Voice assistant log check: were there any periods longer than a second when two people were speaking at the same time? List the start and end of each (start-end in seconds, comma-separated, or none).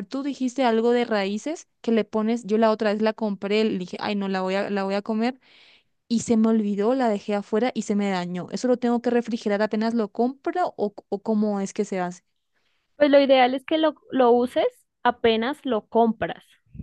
none